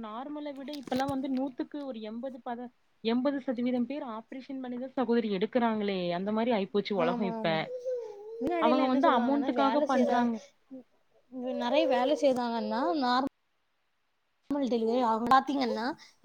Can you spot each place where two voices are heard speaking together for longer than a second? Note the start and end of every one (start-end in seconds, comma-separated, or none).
8.7-10.2